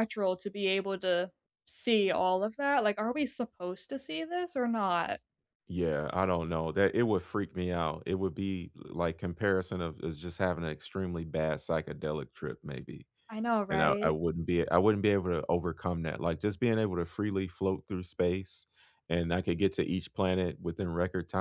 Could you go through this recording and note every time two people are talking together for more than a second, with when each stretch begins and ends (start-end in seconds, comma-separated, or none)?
none